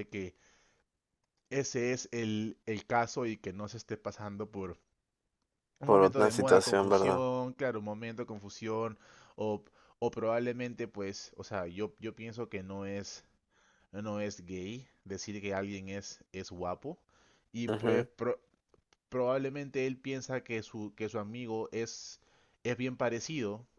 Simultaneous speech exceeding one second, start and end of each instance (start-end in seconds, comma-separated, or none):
5.8-7.2